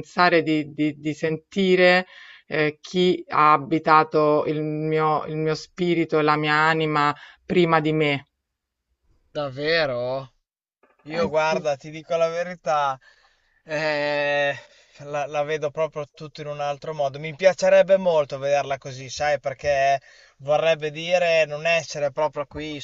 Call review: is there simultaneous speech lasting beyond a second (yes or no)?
no